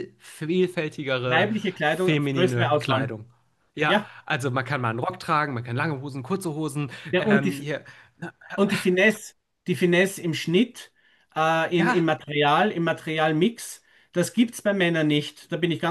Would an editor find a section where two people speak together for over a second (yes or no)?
yes